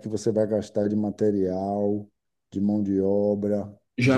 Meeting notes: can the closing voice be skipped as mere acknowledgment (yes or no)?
no